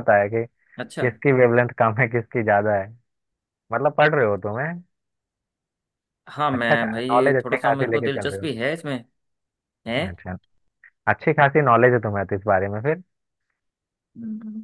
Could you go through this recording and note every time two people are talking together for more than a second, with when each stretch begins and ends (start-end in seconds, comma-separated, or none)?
6.6-8.4